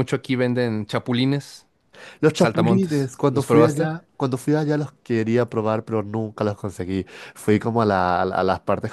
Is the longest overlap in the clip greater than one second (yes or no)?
yes